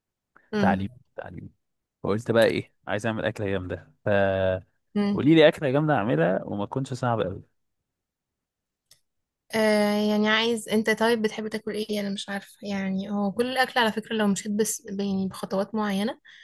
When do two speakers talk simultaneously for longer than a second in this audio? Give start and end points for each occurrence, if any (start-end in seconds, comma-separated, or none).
none